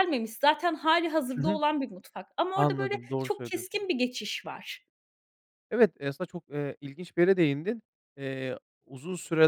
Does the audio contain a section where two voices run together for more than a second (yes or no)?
yes